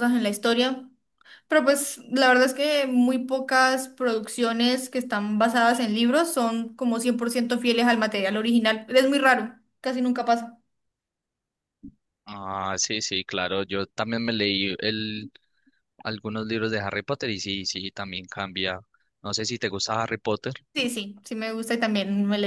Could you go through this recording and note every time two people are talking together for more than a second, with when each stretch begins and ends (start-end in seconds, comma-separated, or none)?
none